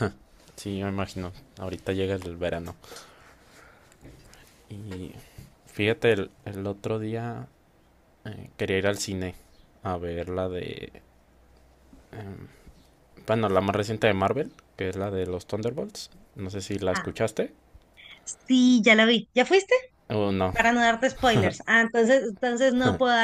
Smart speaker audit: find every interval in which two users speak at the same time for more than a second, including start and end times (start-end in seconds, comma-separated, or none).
none